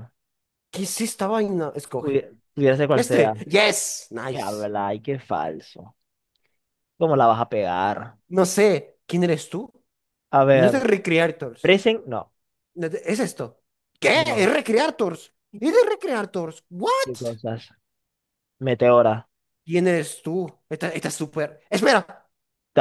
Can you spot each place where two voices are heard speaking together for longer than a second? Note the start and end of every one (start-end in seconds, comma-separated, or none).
none